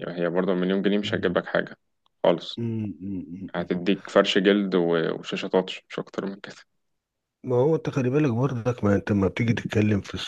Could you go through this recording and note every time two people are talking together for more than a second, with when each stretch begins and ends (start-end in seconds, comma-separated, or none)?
none